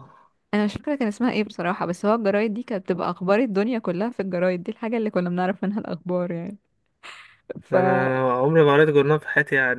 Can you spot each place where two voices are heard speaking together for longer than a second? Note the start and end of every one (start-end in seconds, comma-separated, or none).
none